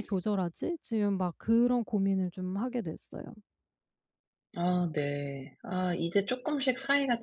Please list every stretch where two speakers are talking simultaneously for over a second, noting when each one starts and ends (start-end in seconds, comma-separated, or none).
none